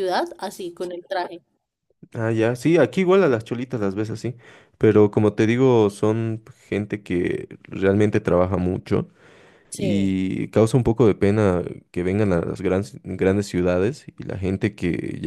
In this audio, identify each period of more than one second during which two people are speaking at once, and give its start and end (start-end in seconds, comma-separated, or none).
none